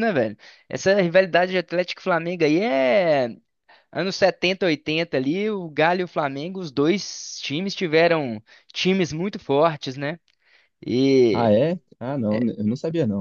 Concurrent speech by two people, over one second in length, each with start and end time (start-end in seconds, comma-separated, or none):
none